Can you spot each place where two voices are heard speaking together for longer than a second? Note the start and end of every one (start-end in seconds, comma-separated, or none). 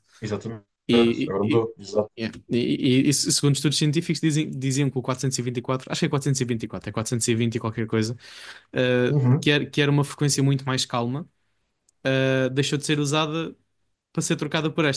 none